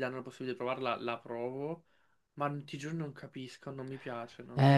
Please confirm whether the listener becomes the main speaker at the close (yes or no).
yes